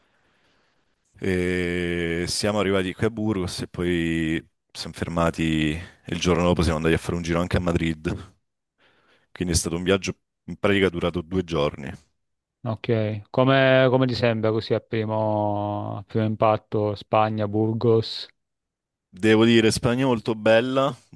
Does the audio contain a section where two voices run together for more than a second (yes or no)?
no